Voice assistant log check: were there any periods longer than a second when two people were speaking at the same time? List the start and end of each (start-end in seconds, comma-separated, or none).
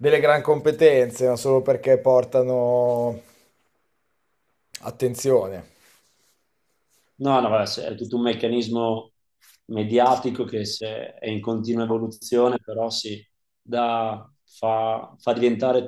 none